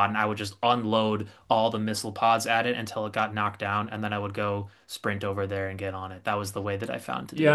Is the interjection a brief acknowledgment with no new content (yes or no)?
no